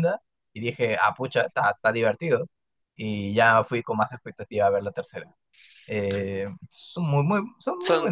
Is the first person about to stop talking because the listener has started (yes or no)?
no